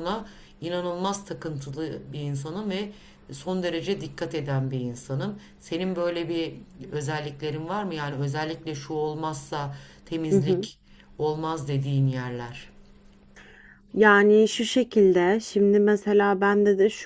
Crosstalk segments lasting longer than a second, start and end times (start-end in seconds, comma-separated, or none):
none